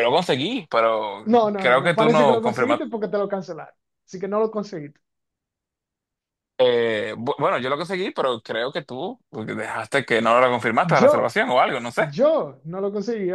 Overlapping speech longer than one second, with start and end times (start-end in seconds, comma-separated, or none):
1.2-2.9